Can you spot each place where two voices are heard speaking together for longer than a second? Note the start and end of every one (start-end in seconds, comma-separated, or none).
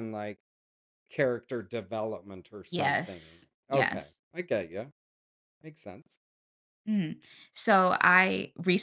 2.7-4.2